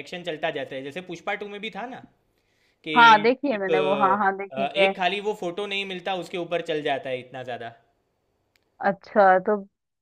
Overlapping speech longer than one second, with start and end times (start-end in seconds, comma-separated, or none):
3.5-4.9